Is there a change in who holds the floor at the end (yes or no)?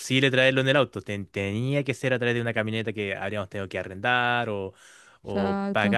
no